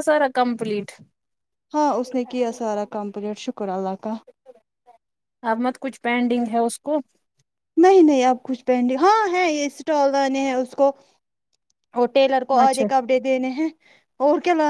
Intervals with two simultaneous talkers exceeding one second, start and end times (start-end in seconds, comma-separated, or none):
none